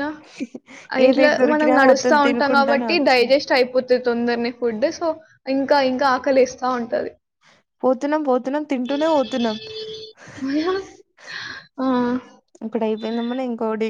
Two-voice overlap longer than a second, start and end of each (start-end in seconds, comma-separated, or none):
1.1-3.3